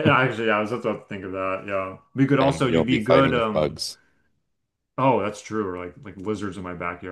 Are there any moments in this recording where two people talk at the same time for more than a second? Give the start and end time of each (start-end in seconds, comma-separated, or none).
2.4-3.8